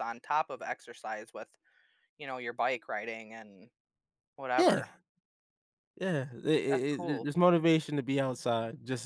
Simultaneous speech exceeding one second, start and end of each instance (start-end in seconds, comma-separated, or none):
none